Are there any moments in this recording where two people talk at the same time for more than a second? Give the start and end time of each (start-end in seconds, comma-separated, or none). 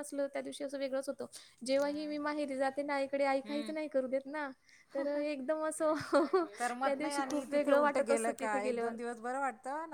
6.8-8.9